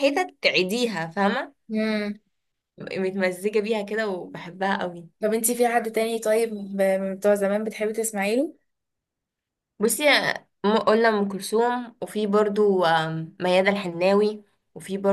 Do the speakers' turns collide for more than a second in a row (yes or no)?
no